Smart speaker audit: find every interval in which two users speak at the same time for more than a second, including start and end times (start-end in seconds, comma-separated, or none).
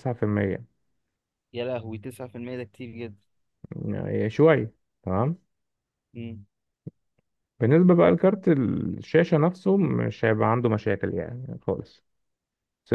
none